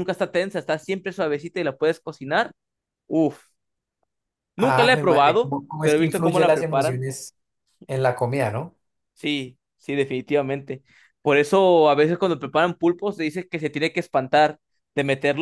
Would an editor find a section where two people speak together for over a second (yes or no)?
yes